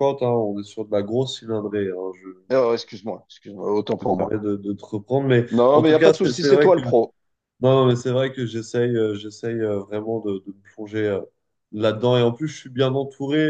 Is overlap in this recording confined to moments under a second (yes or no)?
no